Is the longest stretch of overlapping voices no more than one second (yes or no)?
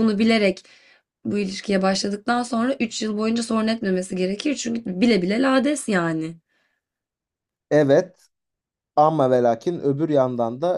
yes